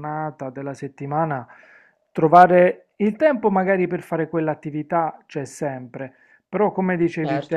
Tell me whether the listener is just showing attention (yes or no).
yes